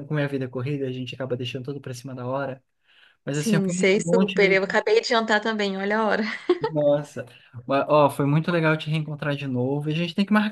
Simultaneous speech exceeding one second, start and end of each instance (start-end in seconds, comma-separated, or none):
3.3-4.6